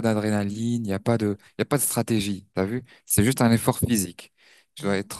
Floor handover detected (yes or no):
no